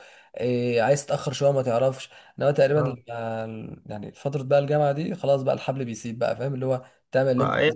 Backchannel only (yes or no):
no